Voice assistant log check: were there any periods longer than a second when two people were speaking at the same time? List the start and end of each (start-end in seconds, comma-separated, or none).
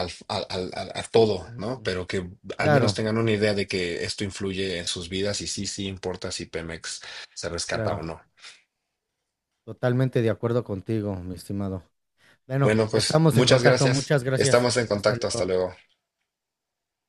12.6-15.5